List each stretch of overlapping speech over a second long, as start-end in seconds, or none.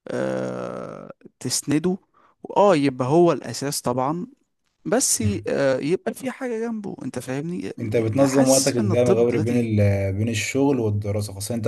8.1-9.7